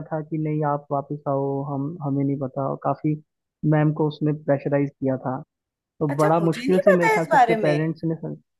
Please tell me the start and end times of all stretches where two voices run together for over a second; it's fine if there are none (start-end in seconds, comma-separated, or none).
6.1-7.8